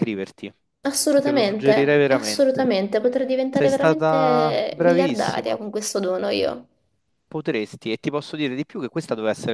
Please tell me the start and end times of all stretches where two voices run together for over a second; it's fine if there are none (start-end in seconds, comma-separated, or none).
1.1-2.7, 3.5-5.5